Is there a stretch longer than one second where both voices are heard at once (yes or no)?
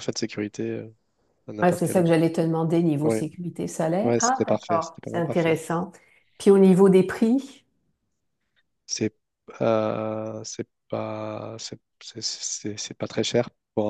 yes